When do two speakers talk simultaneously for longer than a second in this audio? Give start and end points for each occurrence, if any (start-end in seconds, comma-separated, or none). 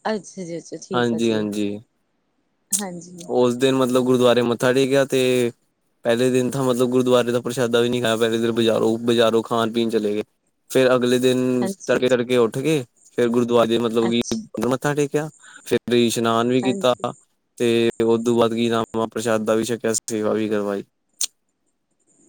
none